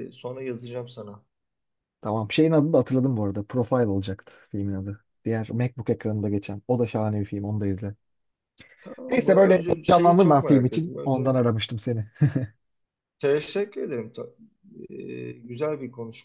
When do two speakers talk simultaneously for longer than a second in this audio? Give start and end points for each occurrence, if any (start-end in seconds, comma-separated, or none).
9.1-11.4